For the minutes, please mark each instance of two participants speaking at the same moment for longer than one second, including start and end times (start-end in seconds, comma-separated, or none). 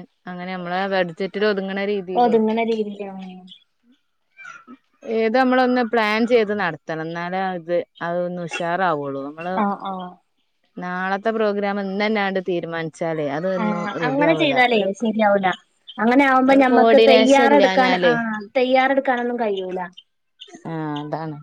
16.5-18.1